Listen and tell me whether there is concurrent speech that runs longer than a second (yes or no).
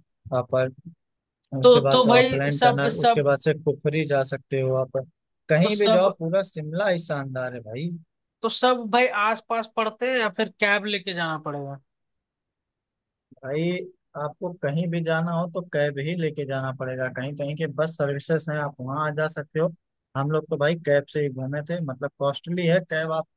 yes